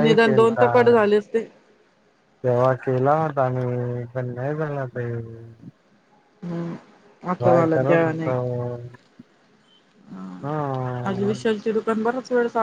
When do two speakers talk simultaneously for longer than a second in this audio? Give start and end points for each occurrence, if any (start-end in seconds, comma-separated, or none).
none